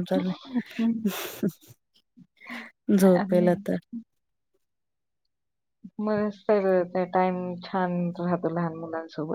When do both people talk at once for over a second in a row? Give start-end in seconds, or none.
none